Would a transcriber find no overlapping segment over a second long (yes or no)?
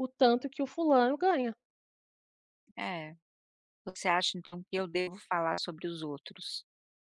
yes